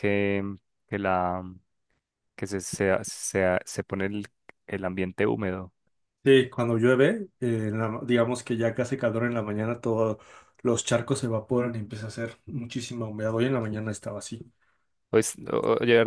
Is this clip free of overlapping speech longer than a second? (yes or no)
yes